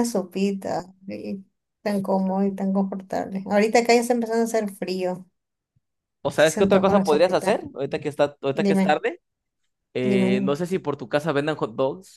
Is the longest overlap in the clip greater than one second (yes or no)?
yes